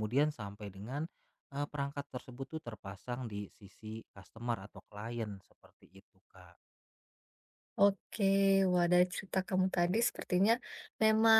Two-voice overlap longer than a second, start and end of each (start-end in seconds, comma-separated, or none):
none